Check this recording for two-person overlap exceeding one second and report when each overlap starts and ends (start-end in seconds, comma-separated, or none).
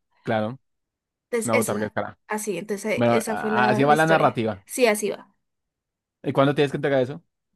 2.9-4.6